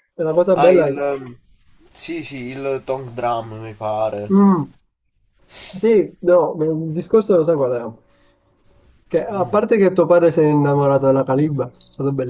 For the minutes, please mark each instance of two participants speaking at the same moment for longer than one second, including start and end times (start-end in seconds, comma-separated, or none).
none